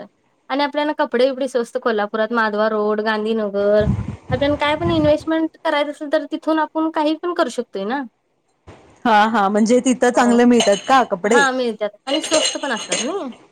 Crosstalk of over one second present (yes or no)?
no